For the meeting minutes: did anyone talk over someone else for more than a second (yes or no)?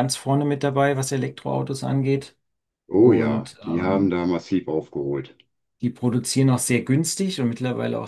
yes